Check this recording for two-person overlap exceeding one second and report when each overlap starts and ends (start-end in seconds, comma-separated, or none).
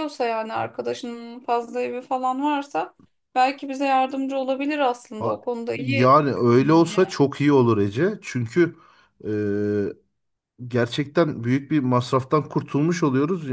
5.2-7.0